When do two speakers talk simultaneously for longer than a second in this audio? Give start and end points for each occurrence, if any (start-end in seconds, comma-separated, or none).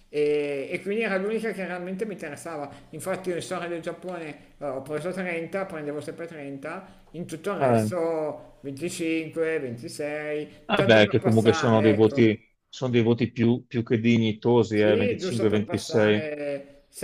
10.7-12.3, 14.7-16.3